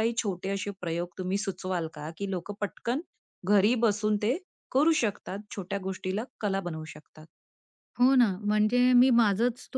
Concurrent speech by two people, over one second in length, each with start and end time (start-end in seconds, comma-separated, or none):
none